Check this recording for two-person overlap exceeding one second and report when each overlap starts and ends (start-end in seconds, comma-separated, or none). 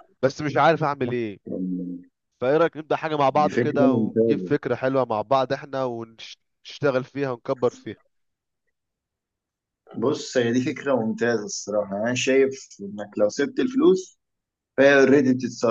3.3-4.6